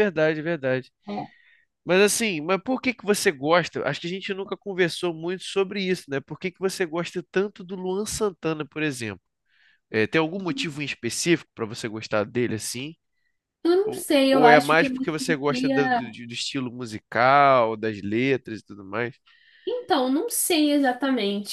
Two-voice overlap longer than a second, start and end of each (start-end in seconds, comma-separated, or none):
13.8-16.0